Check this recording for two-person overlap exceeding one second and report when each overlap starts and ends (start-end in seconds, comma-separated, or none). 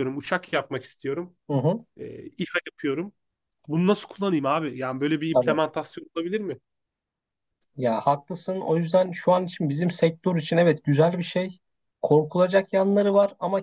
none